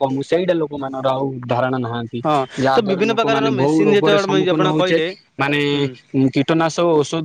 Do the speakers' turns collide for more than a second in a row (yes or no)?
yes